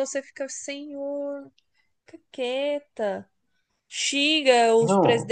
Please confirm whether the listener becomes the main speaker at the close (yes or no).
no